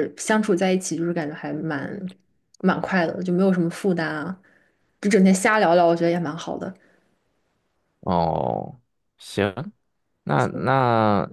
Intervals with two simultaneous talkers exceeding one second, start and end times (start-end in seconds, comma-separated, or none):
none